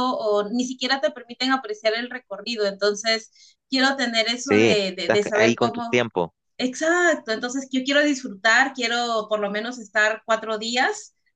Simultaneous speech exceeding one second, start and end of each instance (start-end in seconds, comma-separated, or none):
4.4-6.0